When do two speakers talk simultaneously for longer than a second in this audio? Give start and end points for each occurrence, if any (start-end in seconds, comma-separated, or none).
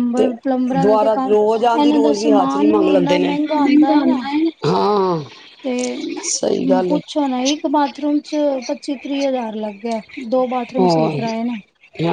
1.8-3.3